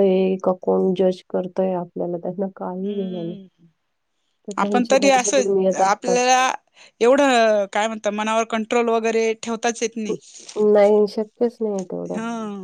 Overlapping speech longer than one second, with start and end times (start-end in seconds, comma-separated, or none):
4.6-6.2